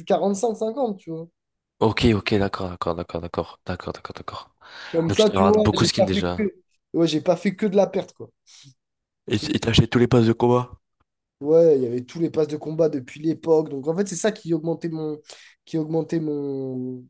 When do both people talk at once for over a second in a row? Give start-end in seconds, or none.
5.1-6.4